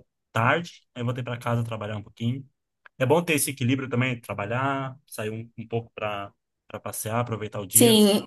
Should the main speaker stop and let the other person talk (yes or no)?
yes